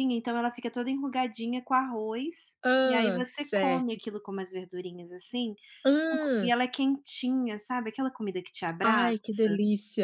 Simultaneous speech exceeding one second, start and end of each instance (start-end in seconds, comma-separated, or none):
2.6-4.0